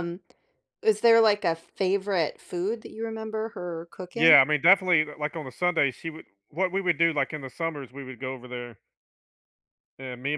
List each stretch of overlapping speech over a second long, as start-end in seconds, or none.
none